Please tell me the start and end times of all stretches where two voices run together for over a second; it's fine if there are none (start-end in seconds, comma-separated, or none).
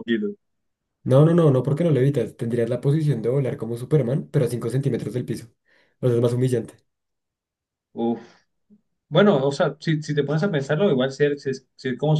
none